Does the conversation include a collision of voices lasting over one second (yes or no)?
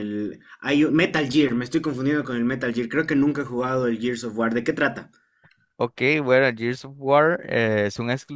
no